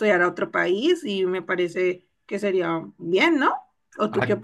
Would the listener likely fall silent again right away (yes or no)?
no